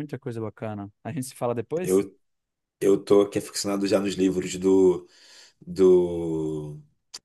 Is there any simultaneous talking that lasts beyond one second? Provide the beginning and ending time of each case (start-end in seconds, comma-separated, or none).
none